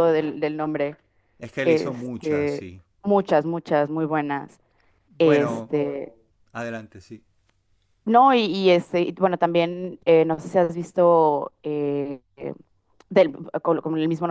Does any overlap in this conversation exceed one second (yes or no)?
yes